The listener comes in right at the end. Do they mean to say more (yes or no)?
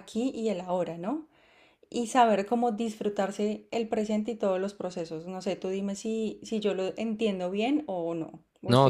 yes